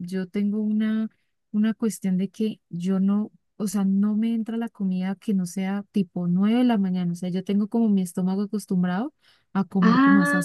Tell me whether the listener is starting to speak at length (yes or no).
yes